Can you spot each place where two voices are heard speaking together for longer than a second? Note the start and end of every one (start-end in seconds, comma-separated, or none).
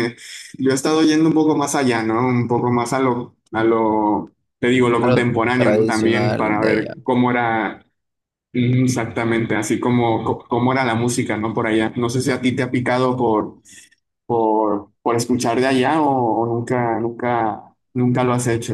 5.0-7.0